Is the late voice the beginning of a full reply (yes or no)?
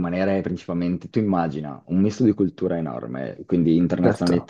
no